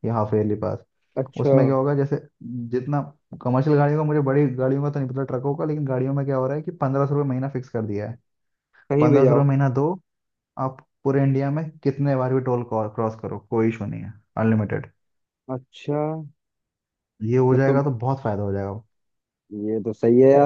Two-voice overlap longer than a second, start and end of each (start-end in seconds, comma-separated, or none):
none